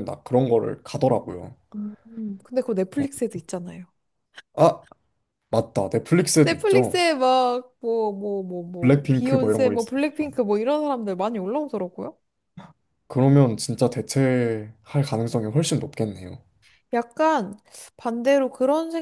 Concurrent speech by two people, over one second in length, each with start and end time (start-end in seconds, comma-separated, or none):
8.8-10.0